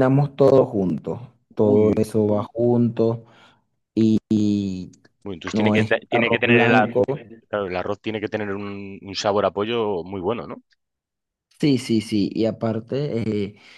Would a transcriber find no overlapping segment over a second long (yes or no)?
no